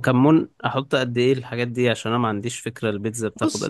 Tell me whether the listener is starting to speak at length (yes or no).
yes